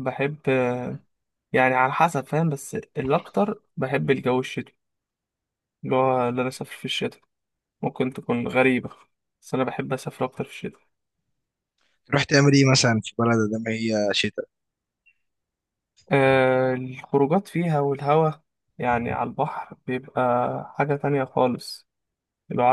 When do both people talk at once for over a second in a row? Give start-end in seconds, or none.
none